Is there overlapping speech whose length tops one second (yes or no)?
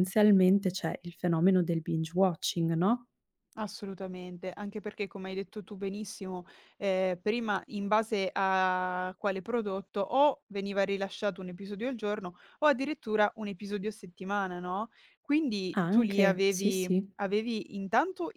yes